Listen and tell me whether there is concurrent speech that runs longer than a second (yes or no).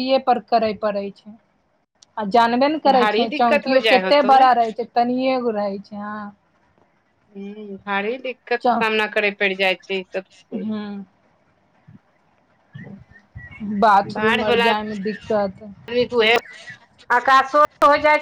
yes